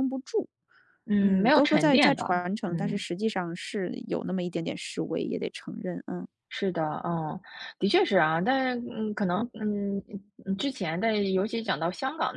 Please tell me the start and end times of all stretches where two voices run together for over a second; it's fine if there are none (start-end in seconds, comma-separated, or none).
1.2-3.0